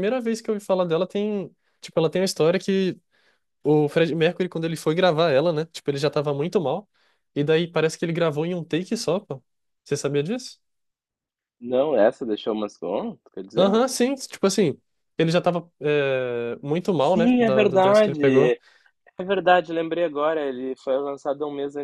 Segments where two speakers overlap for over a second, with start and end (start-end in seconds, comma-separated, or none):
17.0-18.6